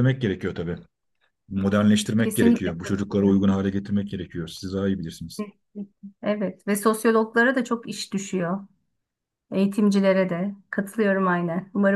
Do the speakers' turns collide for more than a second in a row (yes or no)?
yes